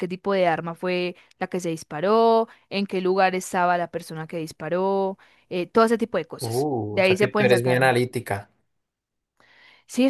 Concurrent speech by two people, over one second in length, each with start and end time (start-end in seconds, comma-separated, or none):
6.4-7.8